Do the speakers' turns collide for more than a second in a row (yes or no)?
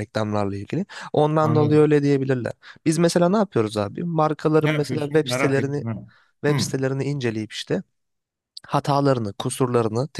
yes